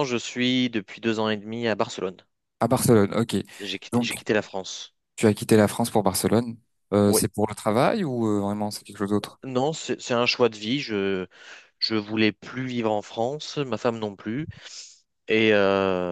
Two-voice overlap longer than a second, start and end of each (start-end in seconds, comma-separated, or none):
none